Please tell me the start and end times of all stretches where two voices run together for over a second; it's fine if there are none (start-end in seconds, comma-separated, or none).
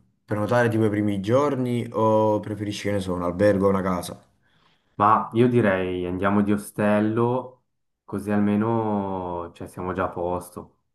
none